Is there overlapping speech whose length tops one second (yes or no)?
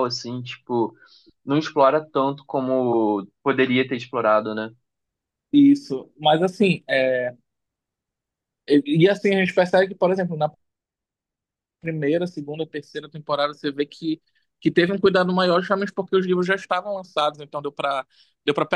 no